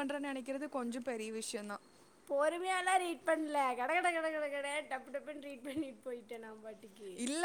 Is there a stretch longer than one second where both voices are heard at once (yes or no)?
no